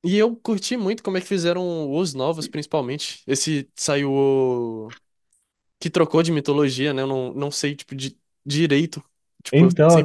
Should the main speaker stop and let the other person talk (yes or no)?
no